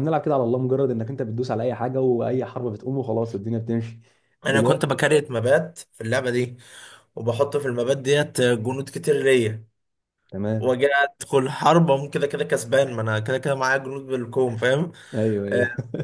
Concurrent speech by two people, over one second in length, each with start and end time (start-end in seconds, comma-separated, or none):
none